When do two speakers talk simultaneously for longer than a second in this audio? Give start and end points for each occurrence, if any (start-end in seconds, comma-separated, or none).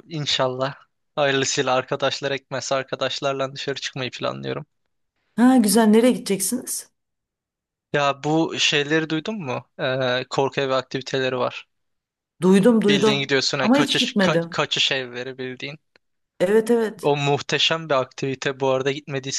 12.9-14.6